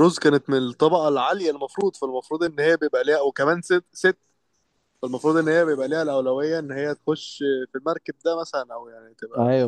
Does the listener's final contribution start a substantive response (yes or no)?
yes